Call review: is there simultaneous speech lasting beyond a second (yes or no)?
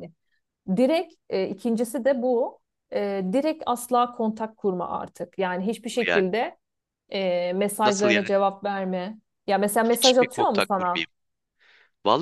yes